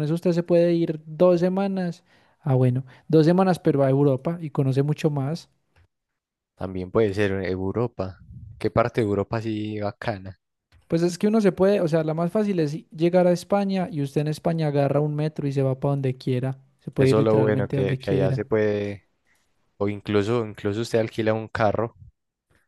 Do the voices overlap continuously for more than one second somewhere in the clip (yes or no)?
yes